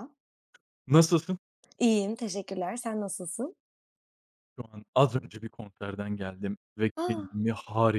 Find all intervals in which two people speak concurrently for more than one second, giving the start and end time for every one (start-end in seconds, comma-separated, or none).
none